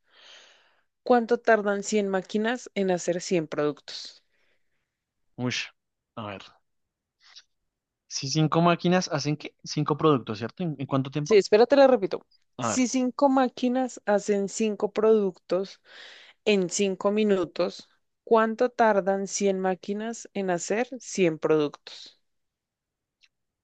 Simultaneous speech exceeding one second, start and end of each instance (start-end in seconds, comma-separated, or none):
none